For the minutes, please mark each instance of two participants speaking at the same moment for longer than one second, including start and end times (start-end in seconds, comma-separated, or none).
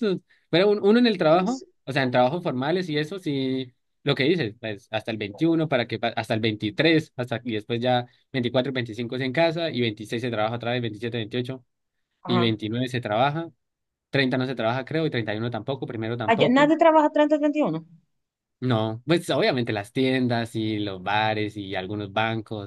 none